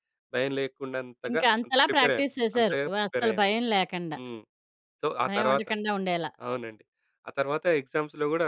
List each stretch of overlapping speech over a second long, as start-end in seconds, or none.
1.3-3.5